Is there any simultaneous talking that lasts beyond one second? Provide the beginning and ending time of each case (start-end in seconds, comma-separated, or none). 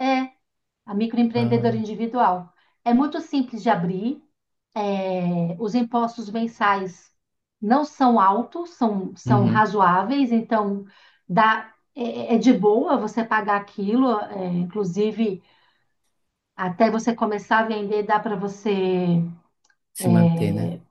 none